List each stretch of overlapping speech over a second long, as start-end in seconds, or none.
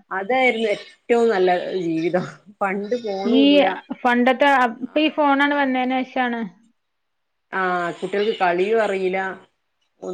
none